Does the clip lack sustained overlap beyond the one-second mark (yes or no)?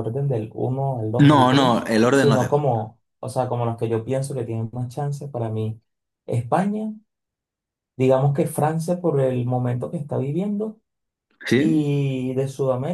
no